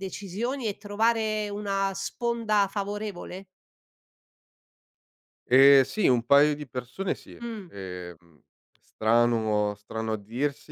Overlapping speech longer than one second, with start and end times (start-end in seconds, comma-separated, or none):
none